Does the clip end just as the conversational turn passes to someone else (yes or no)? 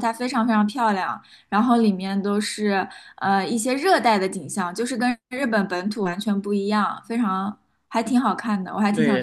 yes